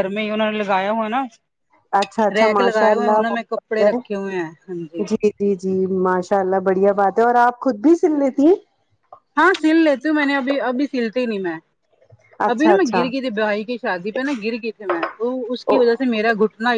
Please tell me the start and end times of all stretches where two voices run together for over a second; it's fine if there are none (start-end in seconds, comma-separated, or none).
2.4-3.9